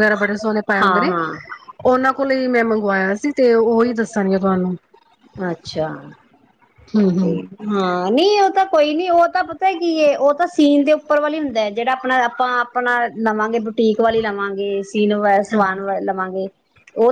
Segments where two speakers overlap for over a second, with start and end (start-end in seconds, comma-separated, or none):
none